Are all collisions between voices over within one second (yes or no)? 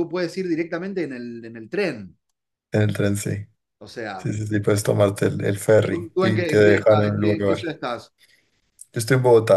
no